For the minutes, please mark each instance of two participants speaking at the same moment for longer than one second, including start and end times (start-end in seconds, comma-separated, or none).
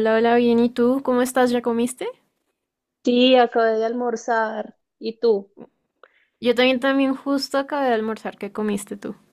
none